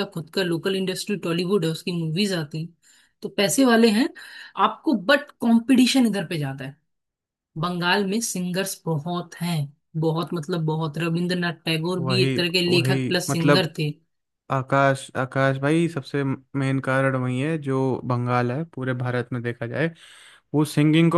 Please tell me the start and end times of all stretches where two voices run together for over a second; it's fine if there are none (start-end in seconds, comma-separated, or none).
12.0-13.7